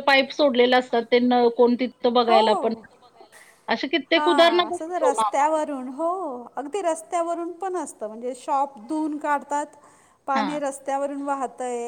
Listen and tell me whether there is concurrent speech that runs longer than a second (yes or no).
yes